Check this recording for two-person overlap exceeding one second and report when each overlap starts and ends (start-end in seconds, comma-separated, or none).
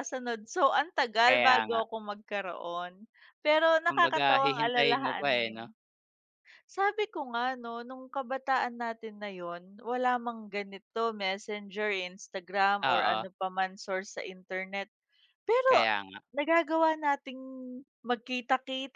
3.9-5.6